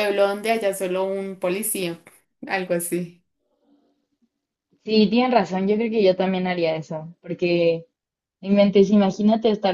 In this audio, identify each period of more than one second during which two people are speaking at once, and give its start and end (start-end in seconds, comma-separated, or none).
none